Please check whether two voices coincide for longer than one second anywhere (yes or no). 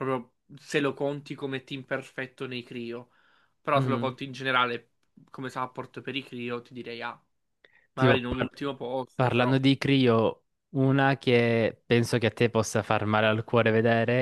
no